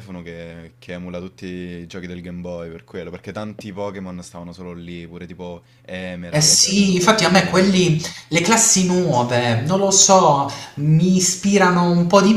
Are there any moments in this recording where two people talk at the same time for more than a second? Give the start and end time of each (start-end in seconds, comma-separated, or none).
6.3-7.7